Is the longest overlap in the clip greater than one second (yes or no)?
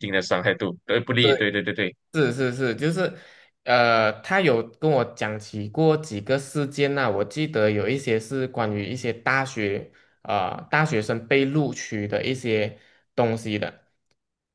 no